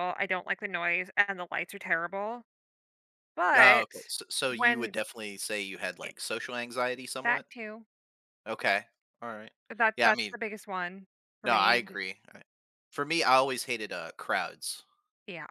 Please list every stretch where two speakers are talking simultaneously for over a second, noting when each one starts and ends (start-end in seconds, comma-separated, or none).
none